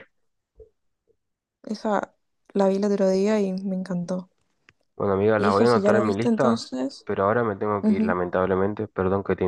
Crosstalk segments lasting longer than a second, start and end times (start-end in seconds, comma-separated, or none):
5.4-6.6